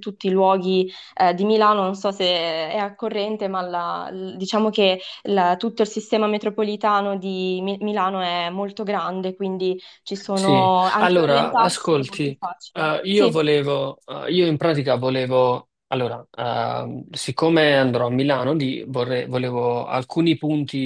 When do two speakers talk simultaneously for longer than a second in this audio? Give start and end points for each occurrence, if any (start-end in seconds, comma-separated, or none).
10.3-13.4